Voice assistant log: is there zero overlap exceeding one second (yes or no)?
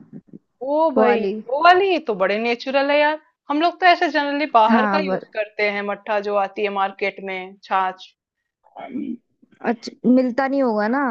yes